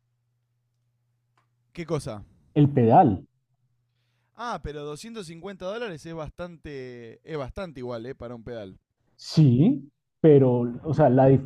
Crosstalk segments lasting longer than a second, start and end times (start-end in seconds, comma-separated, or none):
none